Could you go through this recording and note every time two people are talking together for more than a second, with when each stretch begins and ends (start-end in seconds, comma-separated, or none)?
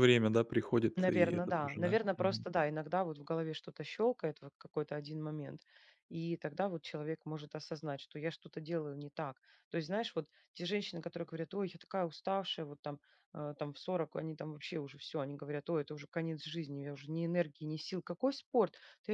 1.0-2.5